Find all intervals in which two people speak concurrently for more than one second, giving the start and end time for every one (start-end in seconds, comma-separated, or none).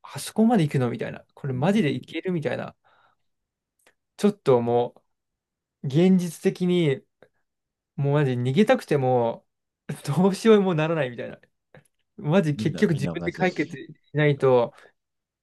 12.6-13.8